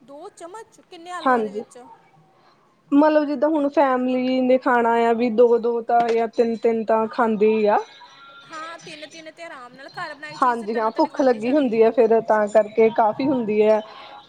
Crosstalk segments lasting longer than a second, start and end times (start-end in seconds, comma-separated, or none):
10.4-11.8